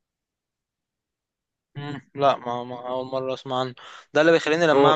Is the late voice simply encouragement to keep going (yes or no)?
yes